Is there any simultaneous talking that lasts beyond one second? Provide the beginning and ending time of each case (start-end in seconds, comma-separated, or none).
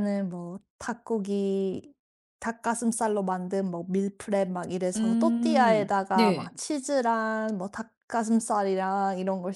5.0-6.5